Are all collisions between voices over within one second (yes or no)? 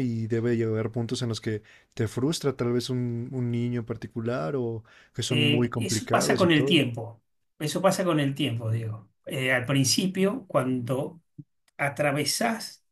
no